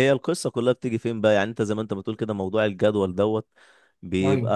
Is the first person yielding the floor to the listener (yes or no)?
no